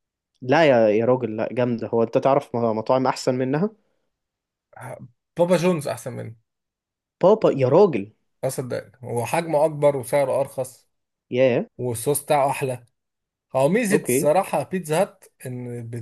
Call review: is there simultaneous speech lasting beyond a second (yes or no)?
no